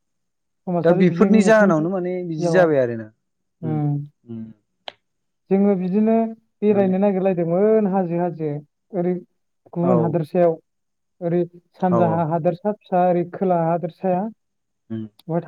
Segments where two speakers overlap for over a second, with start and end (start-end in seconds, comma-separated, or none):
0.8-2.7